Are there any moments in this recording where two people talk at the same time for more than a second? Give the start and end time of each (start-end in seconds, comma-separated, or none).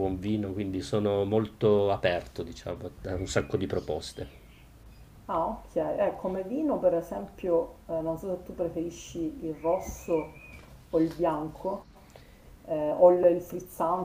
none